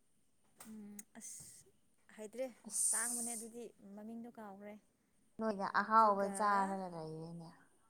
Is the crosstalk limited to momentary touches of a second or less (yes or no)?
yes